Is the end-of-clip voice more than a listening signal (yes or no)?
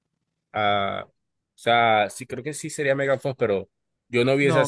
no